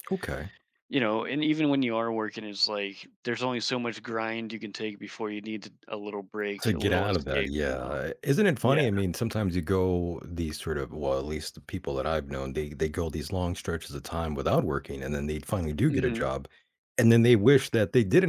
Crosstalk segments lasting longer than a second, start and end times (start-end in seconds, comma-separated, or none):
6.6-7.9